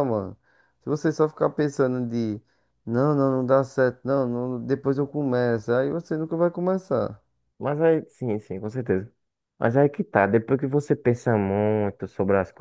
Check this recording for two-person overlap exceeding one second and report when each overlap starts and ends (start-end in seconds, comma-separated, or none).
none